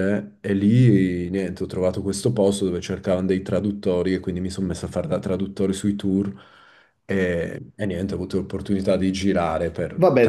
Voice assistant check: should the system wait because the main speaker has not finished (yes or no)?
no